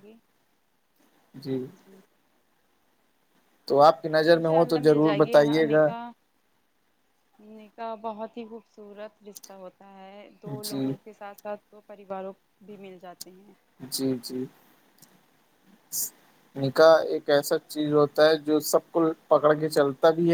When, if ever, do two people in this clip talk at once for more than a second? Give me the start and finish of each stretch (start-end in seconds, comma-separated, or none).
4.4-5.9